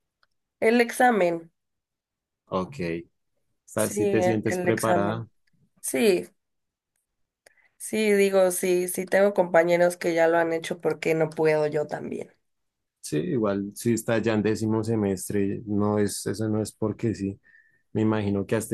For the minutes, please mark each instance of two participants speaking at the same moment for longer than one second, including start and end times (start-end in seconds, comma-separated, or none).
3.8-5.3